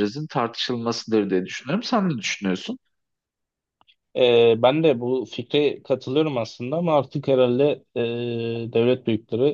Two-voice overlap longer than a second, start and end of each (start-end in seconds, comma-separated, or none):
none